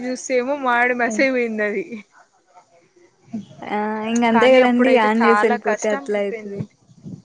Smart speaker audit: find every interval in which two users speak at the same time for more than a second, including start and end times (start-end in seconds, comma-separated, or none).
4.3-6.6